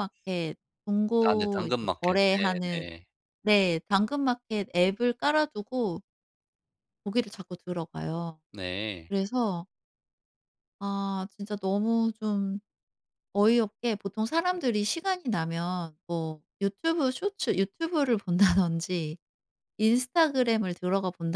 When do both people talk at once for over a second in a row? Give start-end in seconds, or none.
1.3-2.9